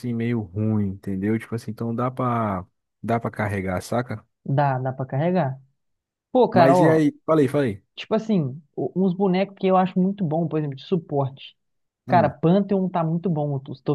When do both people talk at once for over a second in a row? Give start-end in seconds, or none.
none